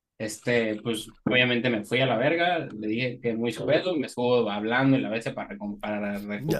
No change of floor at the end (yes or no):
no